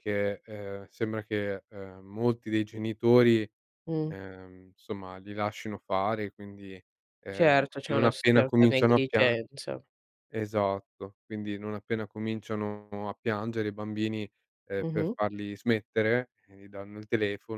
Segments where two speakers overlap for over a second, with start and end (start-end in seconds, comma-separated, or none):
7.3-9.4